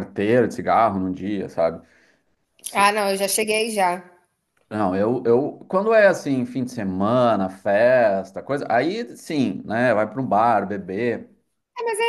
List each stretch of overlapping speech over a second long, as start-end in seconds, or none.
none